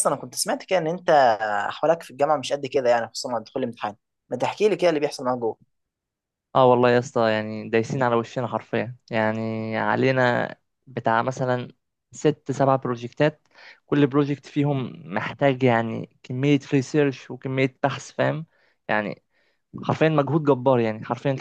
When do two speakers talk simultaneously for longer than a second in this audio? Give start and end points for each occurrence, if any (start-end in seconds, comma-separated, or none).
none